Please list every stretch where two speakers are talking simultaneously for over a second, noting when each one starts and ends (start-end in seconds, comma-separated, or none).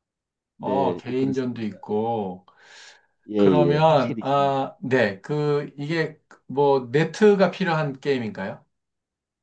0.6-1.8, 3.4-4.6